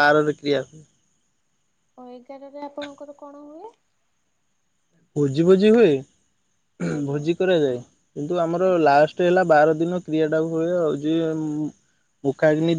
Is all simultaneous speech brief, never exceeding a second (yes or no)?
yes